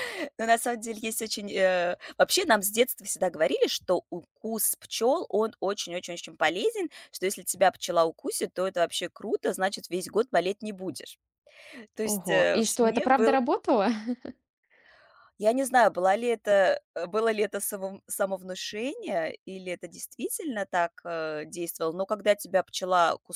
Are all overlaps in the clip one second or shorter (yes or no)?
no